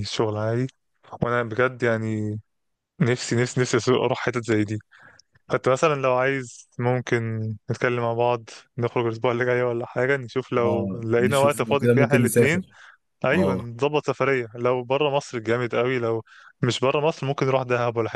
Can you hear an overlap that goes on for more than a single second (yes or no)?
yes